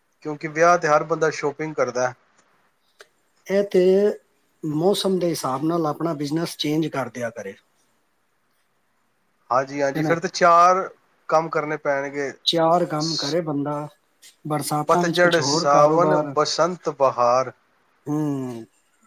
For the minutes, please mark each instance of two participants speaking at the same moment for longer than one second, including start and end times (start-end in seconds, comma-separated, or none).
14.9-16.3